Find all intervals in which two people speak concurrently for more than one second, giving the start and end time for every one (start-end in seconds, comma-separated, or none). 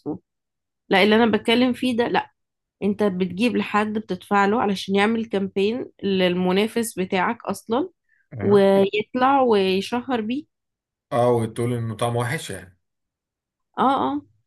none